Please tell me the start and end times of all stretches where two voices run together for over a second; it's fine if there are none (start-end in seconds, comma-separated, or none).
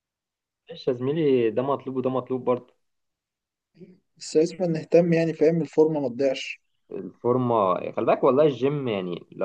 none